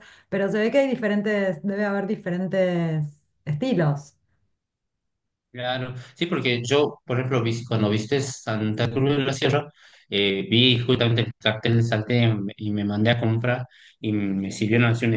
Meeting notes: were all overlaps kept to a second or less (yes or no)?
yes